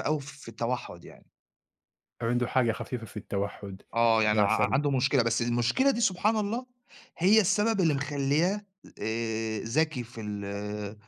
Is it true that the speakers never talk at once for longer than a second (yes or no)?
yes